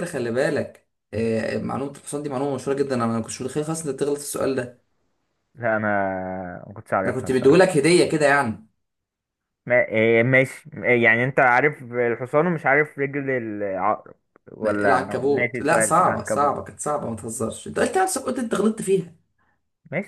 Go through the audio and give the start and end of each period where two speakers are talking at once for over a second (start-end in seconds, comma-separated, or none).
14.7-16.7